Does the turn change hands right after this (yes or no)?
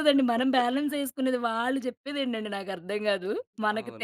yes